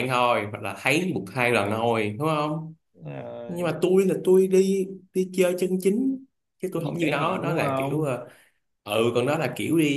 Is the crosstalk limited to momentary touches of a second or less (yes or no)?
no